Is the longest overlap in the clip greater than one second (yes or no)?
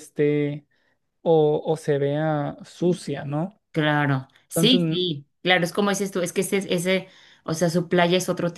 no